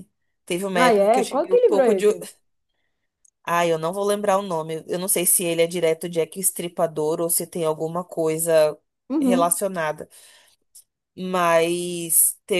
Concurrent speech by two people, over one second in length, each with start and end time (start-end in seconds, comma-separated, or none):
0.7-2.1